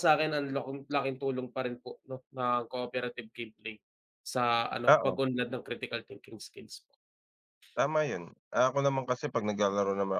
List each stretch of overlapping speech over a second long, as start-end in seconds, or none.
none